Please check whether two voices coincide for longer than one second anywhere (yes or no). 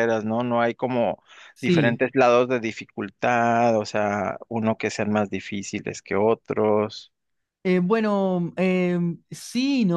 no